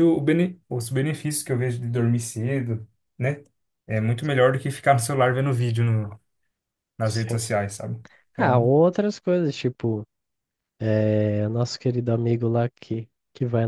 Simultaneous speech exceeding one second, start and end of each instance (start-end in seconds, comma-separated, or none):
none